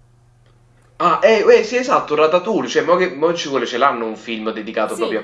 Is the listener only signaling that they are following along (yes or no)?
no